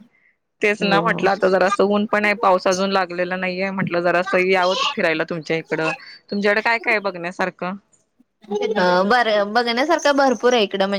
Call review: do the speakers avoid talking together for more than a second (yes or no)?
yes